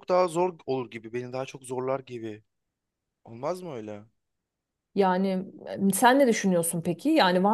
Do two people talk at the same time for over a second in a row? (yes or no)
no